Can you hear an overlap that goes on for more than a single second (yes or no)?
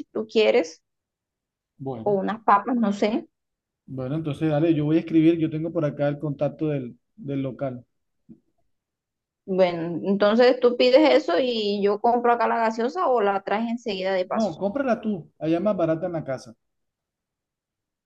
no